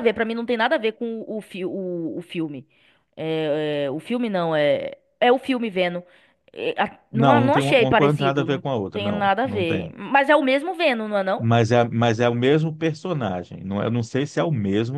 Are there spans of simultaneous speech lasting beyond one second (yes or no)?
yes